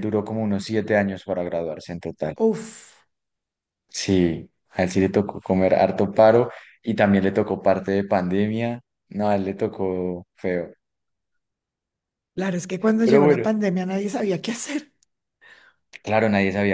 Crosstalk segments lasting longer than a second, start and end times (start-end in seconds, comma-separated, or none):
none